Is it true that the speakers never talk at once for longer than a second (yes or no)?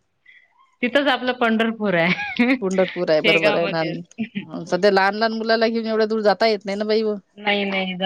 yes